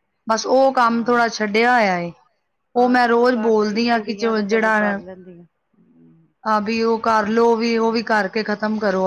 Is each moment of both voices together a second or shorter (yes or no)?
no